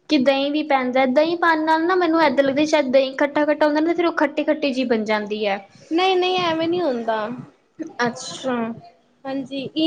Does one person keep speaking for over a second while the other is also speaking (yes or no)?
no